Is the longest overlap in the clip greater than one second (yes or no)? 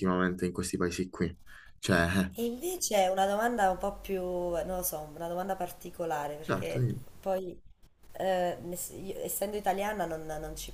no